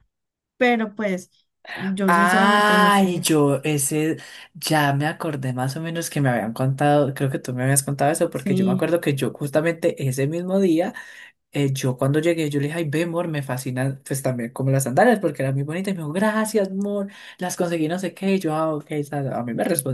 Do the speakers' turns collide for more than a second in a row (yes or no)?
yes